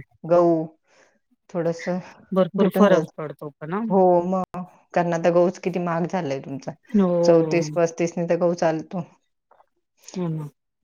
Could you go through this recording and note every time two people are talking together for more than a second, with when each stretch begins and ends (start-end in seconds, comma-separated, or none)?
none